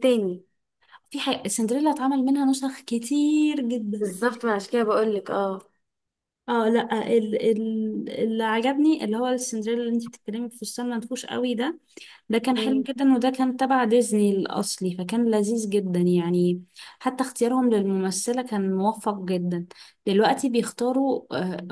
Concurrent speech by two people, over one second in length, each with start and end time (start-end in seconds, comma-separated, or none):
none